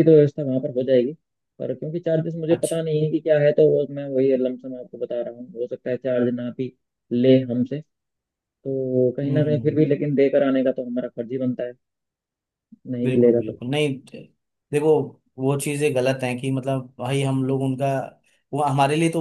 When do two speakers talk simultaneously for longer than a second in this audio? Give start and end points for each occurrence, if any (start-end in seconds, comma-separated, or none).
none